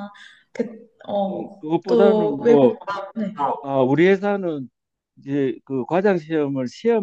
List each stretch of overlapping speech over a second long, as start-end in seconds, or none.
1.3-2.7